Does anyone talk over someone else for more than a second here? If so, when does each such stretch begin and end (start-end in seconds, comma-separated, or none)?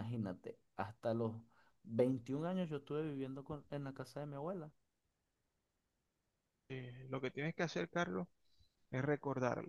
none